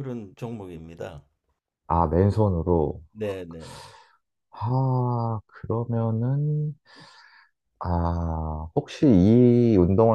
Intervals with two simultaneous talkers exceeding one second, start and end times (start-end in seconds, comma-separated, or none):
none